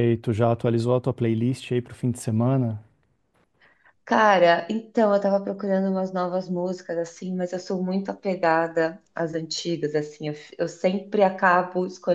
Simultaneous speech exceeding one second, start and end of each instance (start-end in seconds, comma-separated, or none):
none